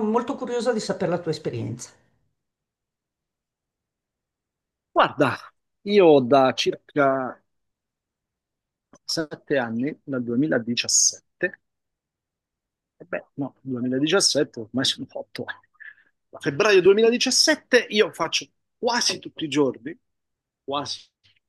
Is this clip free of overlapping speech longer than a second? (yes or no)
yes